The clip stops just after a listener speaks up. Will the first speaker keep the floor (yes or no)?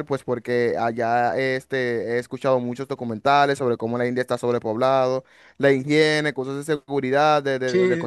no